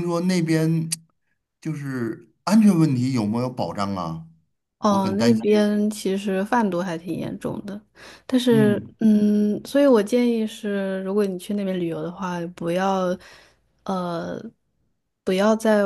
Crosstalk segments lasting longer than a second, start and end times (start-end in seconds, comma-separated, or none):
none